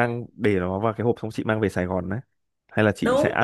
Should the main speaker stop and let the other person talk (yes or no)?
yes